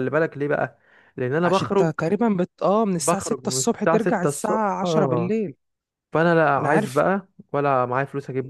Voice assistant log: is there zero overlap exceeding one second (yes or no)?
no